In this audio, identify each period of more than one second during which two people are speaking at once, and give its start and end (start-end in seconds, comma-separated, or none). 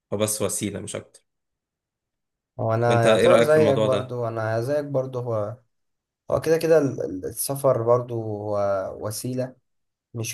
2.9-4.2